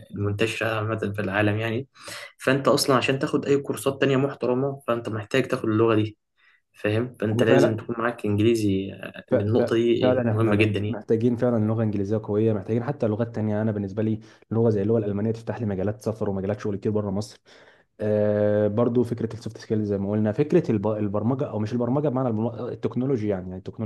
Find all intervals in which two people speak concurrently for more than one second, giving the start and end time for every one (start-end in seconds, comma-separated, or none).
9.3-11.0